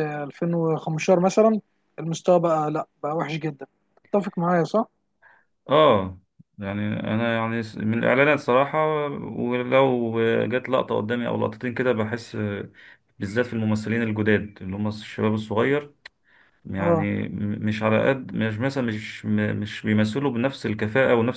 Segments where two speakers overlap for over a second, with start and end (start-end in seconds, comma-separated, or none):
none